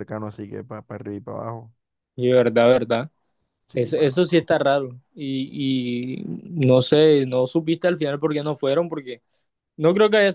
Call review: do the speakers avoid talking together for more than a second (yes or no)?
yes